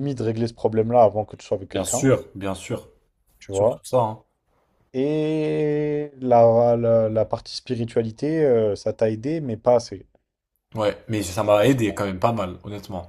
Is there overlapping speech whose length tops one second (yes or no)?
no